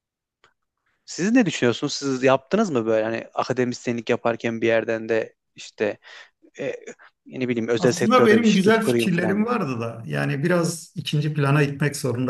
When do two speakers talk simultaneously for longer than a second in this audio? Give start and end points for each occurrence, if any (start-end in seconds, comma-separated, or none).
7.8-9.5